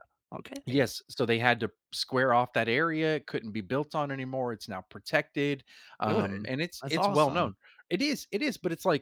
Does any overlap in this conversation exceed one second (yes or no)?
yes